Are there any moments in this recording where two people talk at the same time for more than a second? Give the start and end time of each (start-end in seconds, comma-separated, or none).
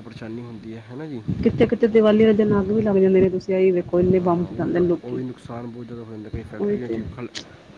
none